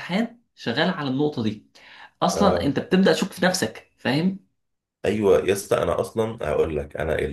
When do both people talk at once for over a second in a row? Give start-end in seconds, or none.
none